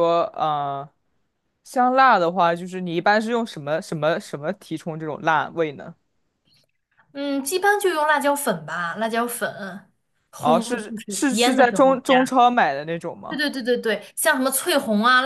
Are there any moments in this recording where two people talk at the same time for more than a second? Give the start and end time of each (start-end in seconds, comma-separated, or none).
10.4-12.2